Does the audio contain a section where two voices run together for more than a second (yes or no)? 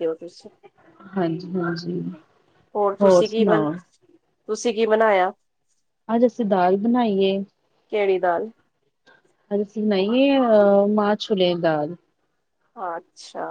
no